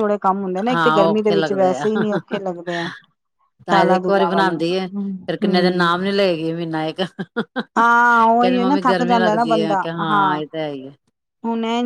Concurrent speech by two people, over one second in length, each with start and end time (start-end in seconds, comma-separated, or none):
3.7-6.0, 7.8-9.9